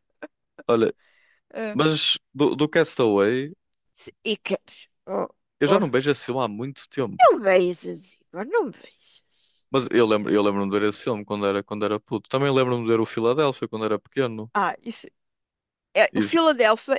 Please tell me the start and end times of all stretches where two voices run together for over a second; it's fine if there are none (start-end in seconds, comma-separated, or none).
none